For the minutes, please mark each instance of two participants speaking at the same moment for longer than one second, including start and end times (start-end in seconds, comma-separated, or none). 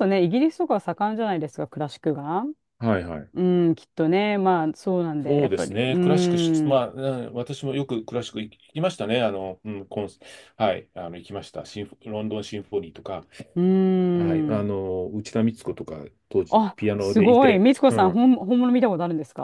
5.2-6.9, 16.5-18.3